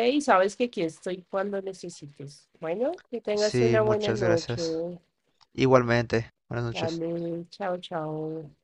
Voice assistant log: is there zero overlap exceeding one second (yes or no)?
no